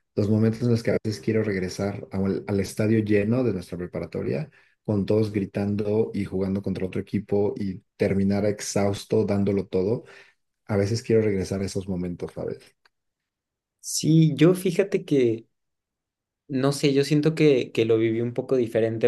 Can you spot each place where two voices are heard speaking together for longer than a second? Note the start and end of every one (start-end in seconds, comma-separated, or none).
none